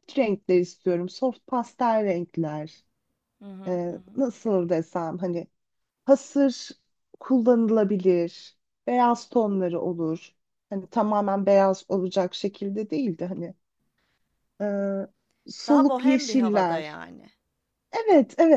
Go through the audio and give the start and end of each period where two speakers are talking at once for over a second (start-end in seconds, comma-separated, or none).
15.7-17.0